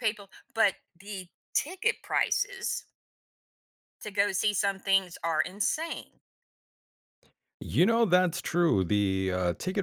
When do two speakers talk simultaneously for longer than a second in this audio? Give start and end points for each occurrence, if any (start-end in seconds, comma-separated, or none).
none